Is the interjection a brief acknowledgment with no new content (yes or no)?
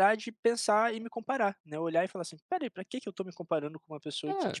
yes